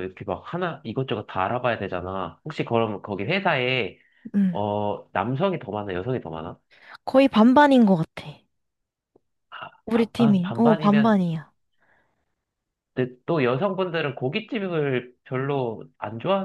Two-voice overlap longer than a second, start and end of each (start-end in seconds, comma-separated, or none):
9.9-11.2